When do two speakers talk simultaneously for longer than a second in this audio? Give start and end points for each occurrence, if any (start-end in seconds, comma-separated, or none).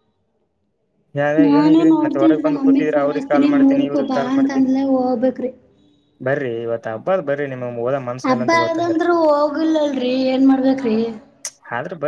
2.4-4.7